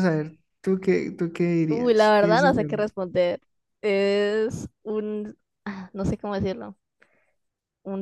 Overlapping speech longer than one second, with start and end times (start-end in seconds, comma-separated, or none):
1.7-2.9